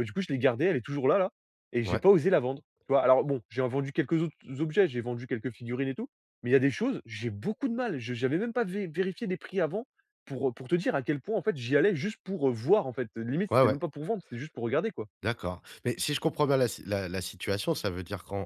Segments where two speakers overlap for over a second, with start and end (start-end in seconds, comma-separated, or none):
none